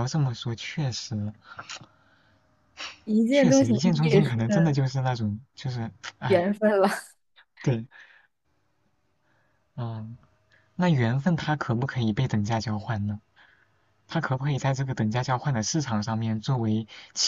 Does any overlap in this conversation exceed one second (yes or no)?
yes